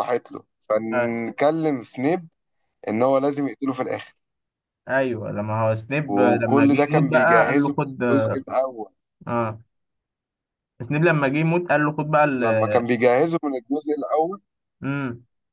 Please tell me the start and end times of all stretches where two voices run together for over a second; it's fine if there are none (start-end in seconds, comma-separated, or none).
6.1-7.8